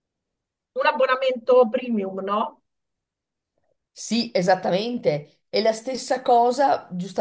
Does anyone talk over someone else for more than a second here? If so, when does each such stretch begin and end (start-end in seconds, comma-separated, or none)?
none